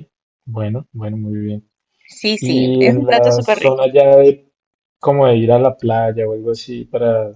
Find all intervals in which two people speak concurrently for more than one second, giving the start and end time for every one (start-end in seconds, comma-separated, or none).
2.4-3.8